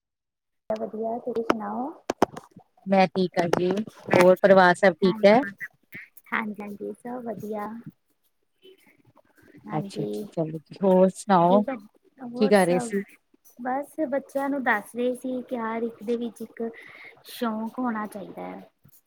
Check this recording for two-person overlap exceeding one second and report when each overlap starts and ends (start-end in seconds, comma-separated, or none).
none